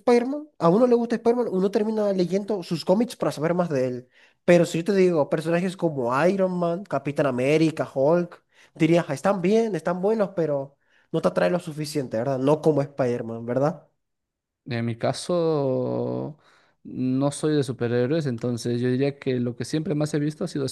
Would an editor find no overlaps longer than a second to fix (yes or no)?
yes